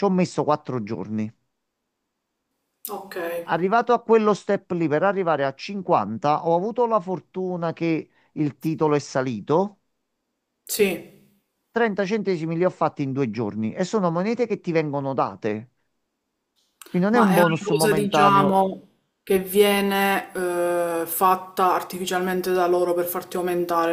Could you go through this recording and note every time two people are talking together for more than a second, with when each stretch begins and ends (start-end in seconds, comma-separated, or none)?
17.1-18.6